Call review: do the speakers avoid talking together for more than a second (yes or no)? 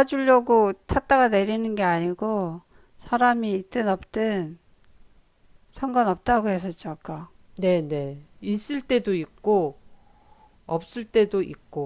yes